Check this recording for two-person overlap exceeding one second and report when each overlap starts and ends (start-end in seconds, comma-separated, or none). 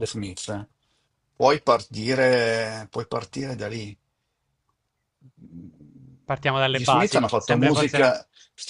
6.7-8.1